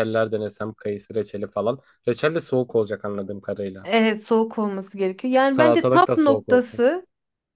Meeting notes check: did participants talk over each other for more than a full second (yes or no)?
yes